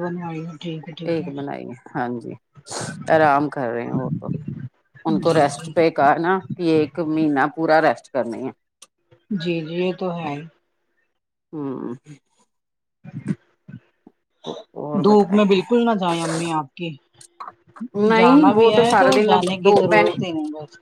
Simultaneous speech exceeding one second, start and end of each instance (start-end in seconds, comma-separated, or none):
18.2-20.1